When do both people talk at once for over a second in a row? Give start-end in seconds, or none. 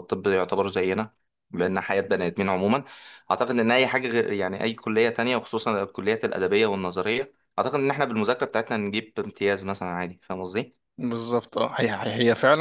none